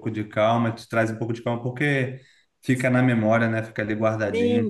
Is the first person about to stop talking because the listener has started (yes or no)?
yes